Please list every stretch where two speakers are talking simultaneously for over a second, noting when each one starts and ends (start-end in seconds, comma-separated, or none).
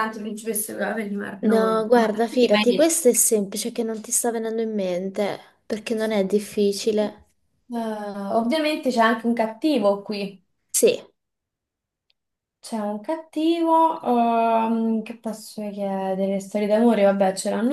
1.4-2.9